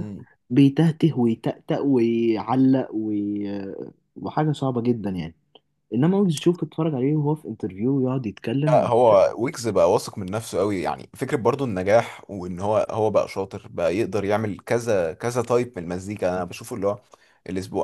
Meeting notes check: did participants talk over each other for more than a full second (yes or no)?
no